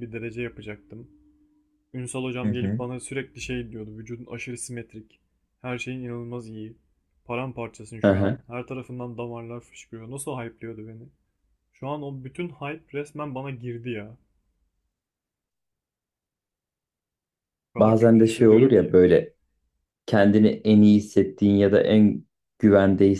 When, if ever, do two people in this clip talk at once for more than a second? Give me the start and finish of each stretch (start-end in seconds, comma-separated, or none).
17.8-19.0